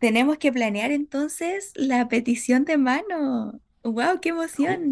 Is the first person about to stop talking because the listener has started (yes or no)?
yes